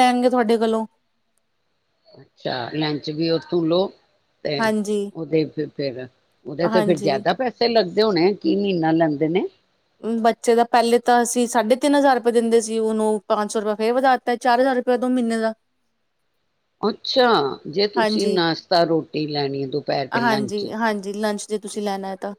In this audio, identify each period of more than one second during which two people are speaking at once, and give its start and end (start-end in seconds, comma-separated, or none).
none